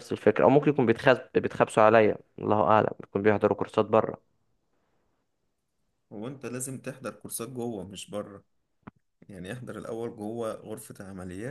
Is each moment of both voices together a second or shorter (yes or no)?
yes